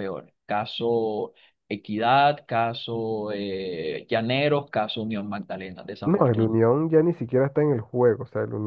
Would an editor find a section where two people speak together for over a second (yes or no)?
no